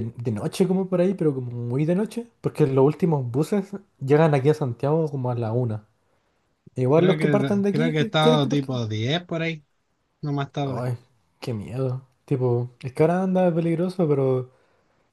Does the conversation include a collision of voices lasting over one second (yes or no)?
yes